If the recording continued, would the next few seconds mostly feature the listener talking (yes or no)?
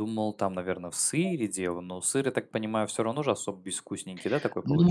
yes